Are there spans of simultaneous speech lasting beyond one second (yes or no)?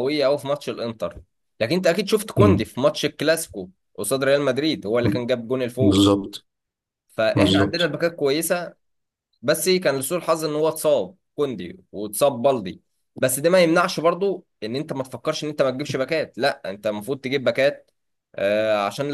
no